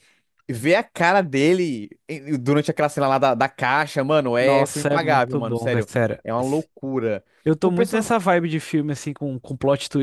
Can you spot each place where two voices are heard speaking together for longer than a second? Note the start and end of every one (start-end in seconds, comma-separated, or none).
4.4-6.7